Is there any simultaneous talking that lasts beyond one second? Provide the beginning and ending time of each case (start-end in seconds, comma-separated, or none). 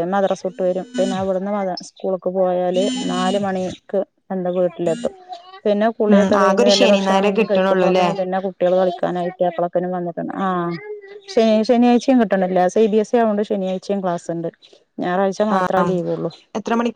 6.1-8.1